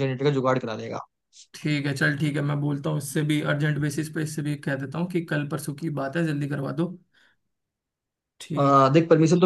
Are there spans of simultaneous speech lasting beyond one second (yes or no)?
no